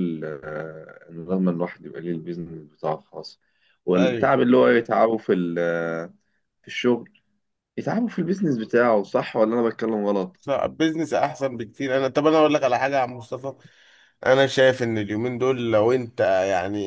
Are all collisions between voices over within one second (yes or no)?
yes